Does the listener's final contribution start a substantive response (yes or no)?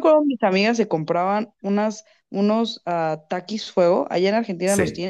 yes